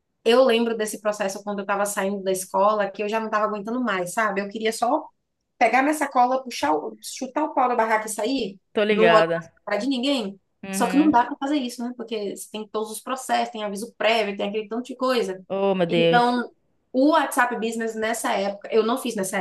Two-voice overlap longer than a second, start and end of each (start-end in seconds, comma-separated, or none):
none